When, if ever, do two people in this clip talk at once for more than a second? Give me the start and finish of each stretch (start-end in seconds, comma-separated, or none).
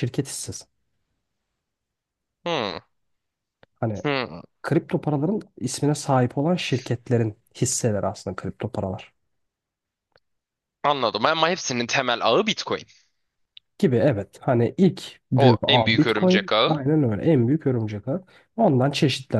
15.3-16.8